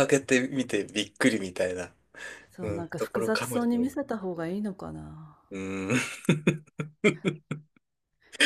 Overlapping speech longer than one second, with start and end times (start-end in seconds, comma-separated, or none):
2.6-4.0